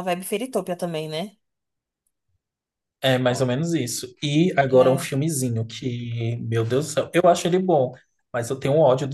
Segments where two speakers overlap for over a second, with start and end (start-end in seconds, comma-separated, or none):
none